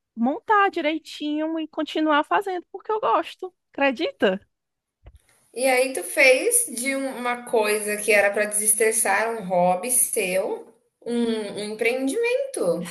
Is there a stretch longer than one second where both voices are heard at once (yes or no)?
no